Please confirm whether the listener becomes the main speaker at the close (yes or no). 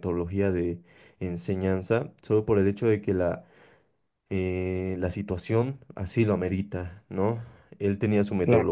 no